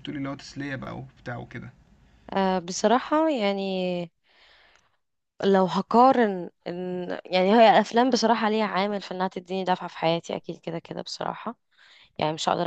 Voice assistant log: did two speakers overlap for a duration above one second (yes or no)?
no